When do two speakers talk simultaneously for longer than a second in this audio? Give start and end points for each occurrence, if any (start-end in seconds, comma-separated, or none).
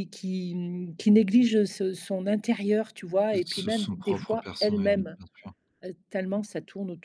3.3-5.2